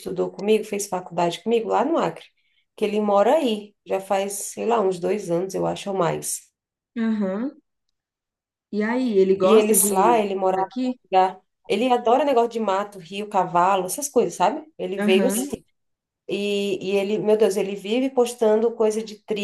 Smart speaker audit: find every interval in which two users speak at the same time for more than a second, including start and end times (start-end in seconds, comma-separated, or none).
9.4-11.0